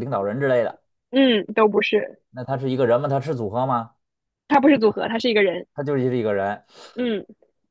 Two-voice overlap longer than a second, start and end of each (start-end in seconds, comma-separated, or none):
none